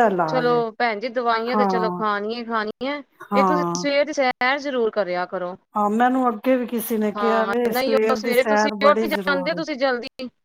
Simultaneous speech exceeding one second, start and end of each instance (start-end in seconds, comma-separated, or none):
7.2-9.6